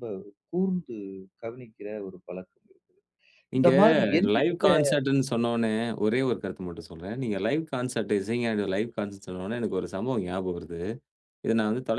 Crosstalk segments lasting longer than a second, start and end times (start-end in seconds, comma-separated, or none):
none